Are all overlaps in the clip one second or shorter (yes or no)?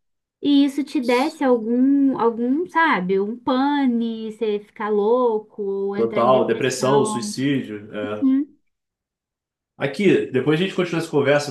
no